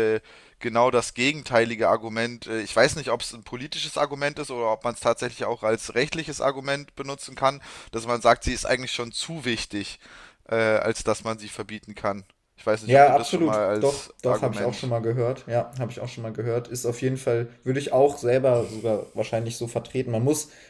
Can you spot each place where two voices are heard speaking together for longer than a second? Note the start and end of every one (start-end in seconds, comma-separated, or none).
12.8-14.9